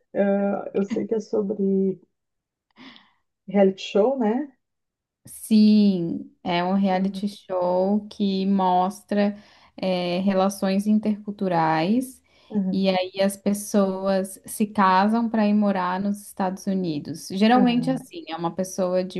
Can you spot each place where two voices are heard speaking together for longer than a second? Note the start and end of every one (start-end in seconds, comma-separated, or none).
none